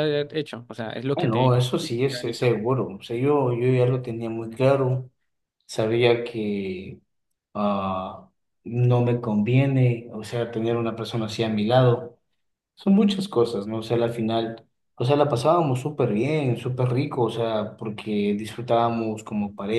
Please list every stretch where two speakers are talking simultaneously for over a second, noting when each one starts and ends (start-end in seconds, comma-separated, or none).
1.1-2.5